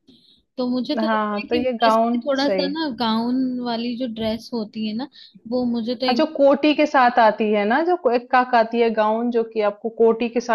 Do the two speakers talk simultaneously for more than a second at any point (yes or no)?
yes